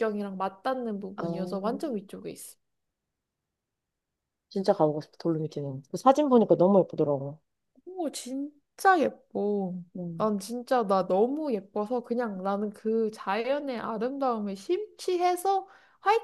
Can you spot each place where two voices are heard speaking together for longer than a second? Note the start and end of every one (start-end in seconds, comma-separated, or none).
none